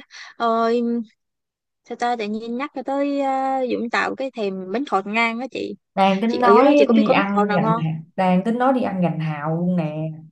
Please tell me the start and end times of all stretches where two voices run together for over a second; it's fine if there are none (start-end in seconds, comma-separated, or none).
6.3-7.8